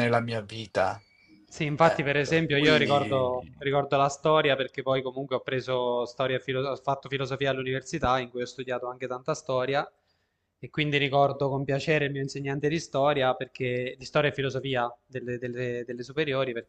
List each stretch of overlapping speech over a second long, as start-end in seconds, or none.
1.8-3.5